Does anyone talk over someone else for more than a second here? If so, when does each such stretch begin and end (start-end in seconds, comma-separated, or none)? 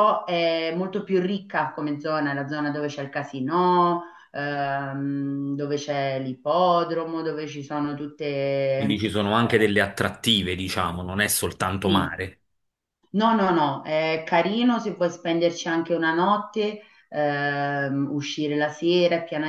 none